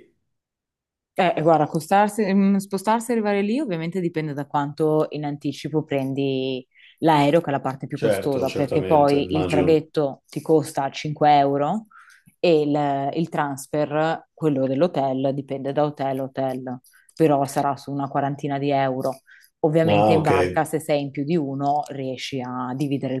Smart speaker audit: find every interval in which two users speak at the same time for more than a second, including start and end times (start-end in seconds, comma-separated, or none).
7.9-9.9